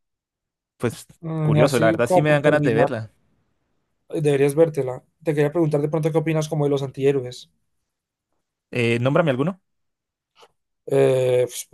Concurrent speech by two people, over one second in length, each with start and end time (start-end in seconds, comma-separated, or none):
1.4-2.9